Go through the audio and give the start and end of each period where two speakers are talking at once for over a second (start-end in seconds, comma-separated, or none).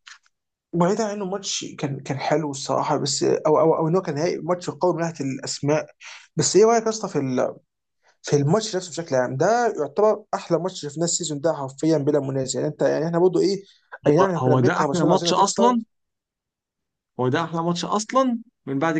14.2-15.8